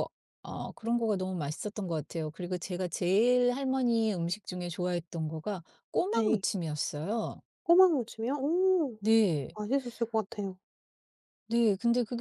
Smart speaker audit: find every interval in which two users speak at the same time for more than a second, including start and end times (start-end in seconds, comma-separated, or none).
none